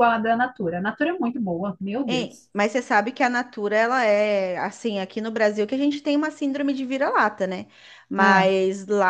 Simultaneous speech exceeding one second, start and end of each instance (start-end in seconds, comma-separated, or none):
none